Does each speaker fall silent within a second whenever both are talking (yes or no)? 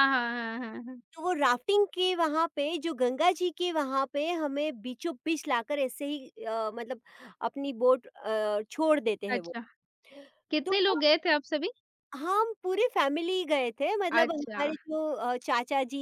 yes